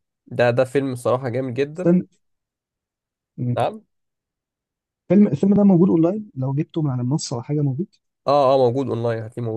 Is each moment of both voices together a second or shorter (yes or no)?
yes